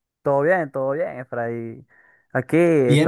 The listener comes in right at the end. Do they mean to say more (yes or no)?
yes